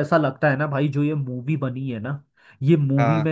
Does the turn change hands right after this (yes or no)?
no